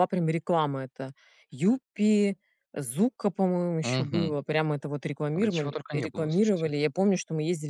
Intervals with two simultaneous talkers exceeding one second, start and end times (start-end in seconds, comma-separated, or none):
5.3-6.7